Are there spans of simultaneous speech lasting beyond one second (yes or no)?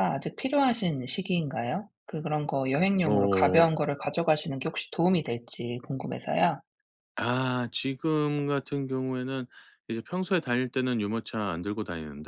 no